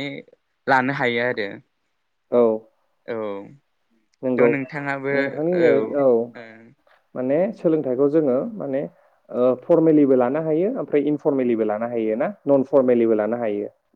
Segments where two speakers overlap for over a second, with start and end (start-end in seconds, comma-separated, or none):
none